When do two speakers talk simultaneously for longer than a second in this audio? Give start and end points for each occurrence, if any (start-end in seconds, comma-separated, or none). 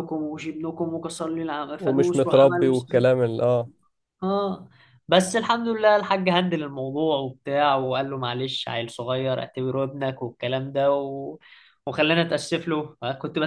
1.8-3.1